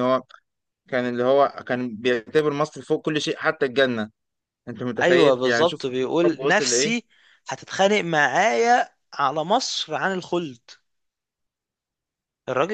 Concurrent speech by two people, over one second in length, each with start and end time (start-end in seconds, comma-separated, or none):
5.0-6.9